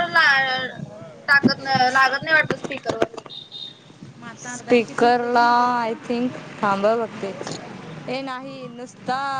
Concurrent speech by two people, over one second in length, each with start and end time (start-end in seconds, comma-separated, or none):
none